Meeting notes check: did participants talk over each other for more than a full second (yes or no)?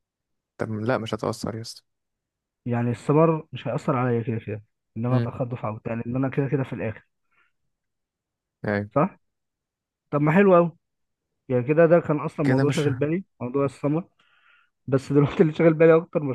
no